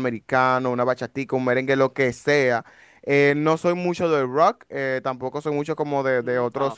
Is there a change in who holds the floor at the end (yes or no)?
no